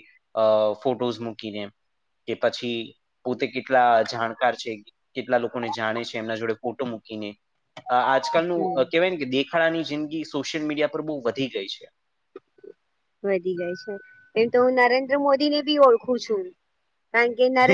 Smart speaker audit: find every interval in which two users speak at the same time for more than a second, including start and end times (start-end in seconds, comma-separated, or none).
none